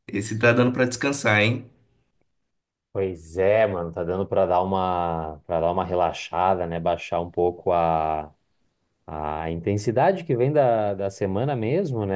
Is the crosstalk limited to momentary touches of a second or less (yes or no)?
yes